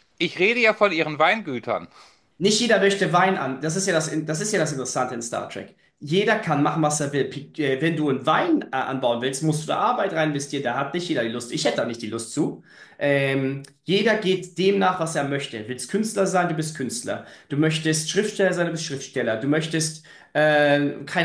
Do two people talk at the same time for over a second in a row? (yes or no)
no